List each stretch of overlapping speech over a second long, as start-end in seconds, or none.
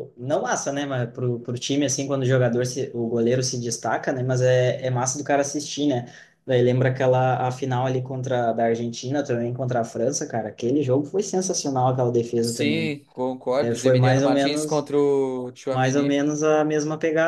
13.6-14.9